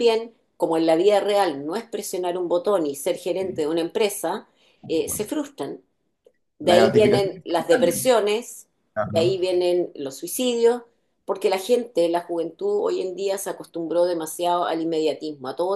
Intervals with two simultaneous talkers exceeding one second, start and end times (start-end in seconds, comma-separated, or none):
6.6-8.1